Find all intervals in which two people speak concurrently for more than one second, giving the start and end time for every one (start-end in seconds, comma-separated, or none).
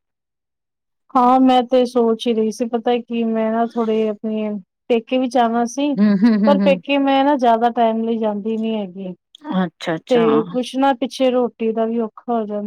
none